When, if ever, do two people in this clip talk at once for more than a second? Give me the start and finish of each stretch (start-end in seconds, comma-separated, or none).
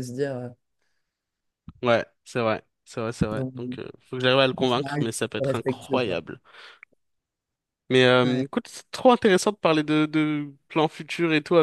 4.6-6.2